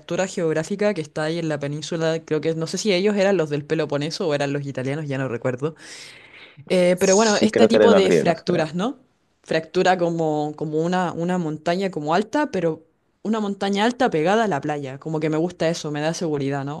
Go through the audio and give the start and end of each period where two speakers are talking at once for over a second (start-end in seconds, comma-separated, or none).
6.9-8.7